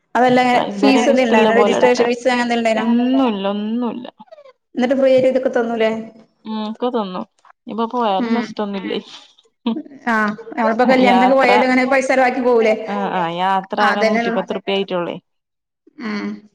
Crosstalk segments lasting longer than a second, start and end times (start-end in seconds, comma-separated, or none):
0.8-2.1